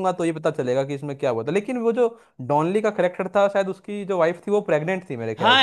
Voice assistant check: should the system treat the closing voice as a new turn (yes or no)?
yes